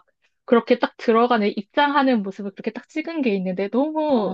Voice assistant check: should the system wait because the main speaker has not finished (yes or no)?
yes